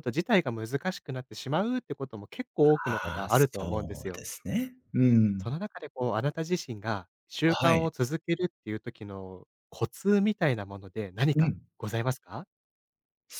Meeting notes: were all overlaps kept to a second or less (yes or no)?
no